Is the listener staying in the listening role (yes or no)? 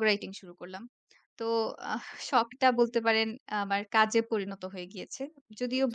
yes